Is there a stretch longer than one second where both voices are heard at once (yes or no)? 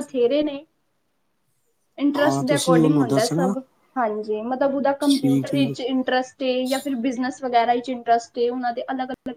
yes